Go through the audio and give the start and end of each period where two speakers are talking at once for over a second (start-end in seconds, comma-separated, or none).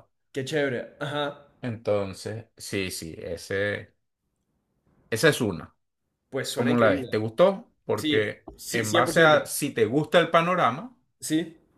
7.9-9.4